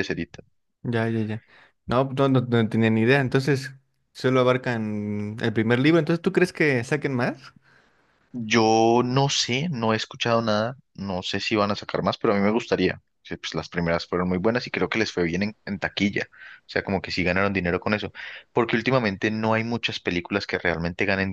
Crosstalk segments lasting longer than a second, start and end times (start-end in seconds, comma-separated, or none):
none